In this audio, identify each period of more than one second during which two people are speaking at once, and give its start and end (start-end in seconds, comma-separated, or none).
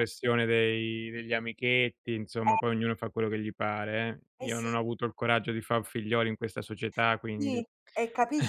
none